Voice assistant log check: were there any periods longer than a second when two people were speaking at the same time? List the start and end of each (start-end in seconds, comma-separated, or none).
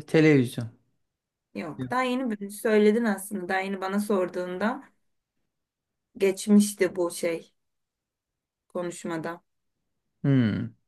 none